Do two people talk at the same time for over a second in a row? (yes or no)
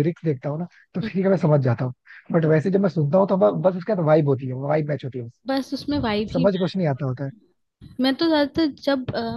no